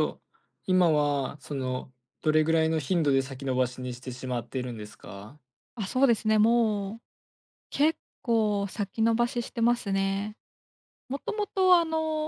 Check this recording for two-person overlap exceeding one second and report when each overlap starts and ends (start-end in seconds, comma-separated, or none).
none